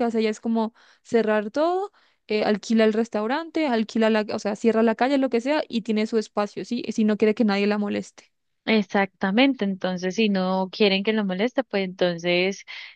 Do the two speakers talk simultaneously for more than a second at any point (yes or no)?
no